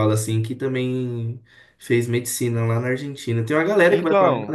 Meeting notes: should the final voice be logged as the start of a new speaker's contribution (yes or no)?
yes